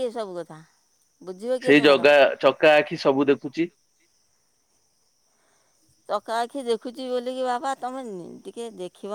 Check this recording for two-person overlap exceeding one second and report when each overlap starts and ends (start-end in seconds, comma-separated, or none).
none